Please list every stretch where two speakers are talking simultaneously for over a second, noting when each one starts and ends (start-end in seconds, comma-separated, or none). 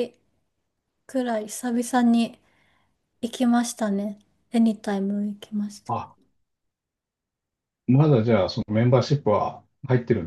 none